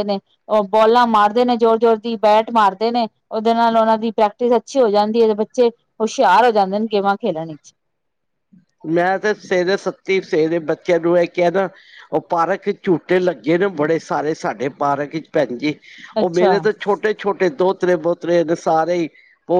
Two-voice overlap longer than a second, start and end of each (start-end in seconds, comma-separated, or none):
none